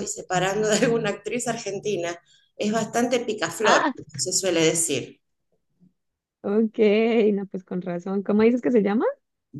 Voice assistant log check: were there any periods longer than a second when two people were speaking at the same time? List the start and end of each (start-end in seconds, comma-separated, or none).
none